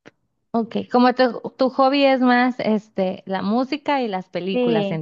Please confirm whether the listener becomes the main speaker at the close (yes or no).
yes